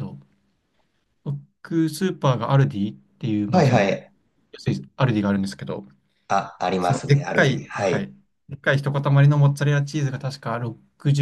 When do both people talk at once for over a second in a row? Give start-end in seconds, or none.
6.8-8.1